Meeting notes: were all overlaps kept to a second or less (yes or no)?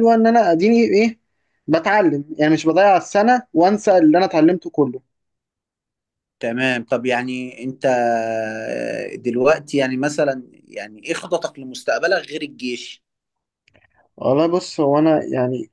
yes